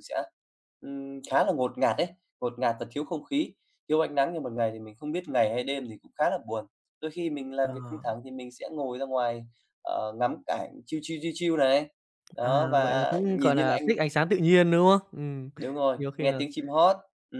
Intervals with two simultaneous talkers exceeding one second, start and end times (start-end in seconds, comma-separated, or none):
12.4-13.9